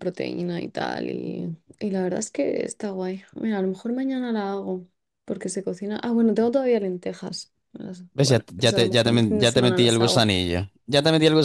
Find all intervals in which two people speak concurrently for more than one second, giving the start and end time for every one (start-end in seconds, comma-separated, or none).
8.1-10.2